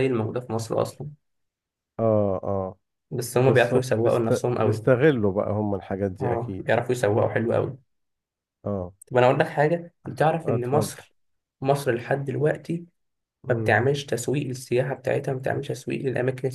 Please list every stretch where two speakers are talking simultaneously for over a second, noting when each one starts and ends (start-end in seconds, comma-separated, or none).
3.5-4.9